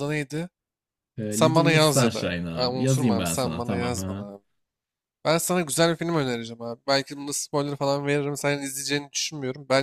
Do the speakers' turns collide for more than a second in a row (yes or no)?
yes